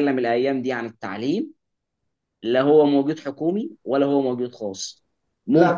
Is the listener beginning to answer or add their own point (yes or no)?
yes